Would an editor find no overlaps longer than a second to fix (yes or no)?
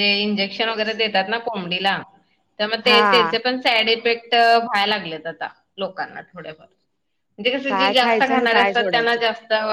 no